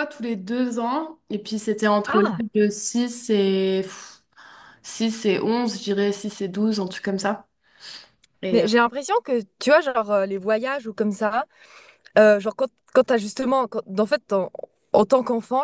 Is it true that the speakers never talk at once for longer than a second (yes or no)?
yes